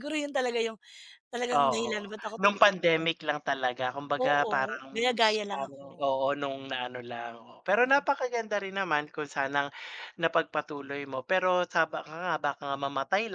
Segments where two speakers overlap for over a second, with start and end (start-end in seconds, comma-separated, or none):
1.5-3.1, 4.2-6.0